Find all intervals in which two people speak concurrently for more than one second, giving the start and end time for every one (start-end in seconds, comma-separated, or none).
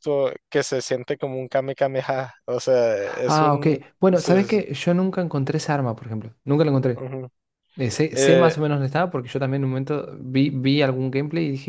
3.0-4.6